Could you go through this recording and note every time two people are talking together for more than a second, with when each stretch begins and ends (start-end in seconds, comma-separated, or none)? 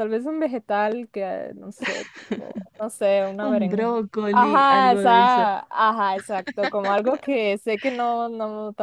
3.4-5.5